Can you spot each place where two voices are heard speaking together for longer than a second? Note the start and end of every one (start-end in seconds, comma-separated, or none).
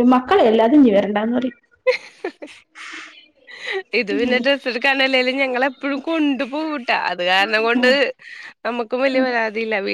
none